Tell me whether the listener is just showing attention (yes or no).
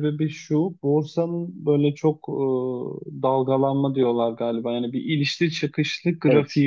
yes